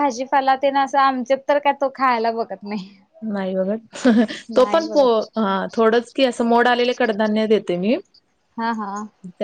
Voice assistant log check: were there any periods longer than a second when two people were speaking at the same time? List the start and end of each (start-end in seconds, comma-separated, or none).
none